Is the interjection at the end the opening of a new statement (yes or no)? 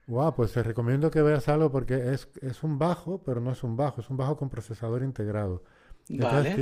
no